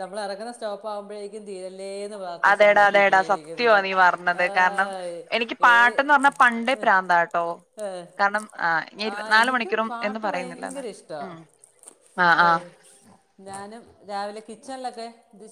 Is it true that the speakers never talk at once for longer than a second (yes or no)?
no